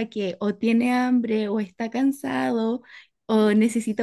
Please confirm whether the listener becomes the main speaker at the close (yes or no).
no